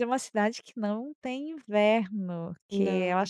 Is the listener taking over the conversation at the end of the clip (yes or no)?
no